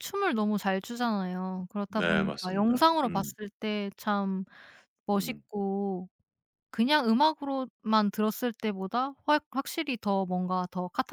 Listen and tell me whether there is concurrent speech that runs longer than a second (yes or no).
yes